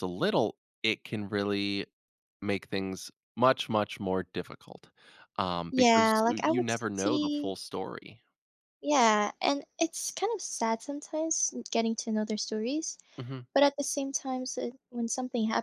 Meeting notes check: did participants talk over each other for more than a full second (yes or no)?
yes